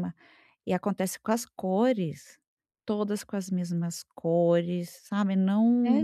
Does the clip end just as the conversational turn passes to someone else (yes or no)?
yes